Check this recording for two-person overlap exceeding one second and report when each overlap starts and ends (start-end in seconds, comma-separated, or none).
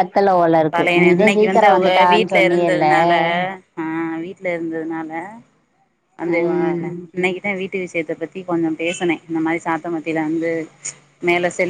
0.7-2.9